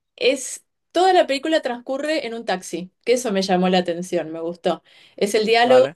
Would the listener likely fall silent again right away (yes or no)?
yes